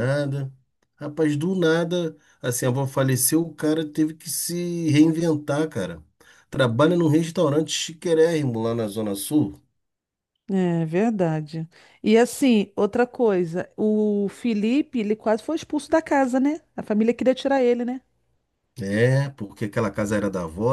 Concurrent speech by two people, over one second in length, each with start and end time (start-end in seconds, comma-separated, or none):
none